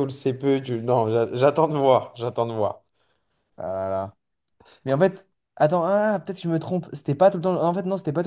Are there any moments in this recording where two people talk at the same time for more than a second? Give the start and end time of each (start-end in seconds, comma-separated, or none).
none